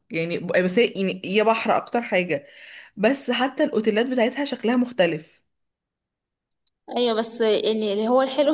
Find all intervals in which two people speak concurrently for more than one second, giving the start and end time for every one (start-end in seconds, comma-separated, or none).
none